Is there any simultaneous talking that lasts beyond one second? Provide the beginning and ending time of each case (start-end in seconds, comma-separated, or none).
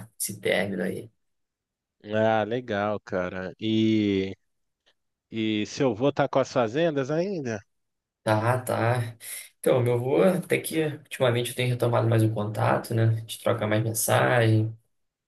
none